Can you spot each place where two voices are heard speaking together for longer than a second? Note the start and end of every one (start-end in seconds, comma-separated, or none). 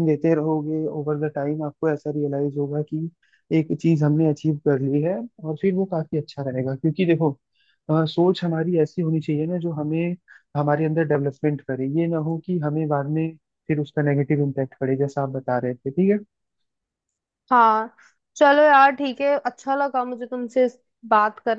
none